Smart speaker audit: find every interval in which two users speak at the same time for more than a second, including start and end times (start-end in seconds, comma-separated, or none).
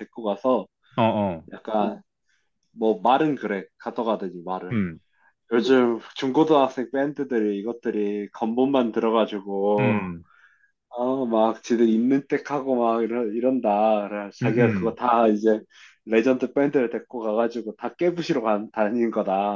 none